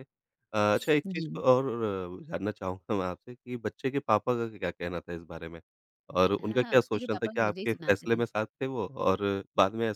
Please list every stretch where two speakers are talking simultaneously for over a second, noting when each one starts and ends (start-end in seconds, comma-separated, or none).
6.4-8.2